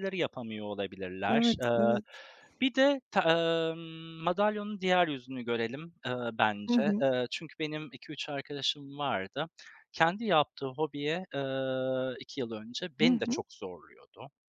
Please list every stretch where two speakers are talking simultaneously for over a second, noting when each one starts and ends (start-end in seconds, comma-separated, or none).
none